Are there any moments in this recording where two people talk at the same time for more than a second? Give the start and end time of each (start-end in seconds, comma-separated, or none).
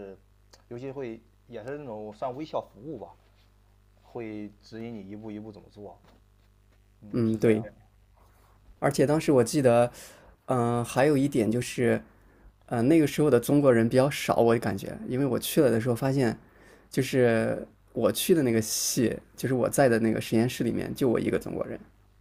none